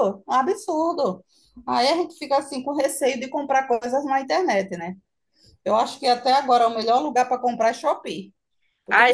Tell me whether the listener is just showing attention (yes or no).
yes